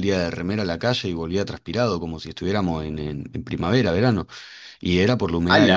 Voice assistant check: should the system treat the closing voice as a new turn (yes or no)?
no